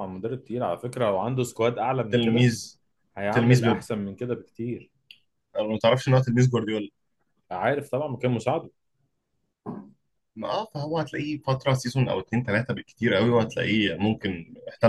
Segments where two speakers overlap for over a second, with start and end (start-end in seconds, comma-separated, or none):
none